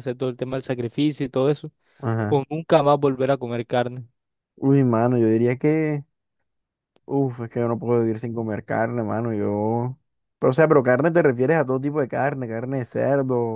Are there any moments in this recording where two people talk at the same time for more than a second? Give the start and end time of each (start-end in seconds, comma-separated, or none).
none